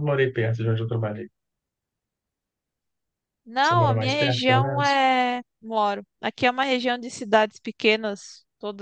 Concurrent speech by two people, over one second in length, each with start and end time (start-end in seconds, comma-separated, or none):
3.6-5.0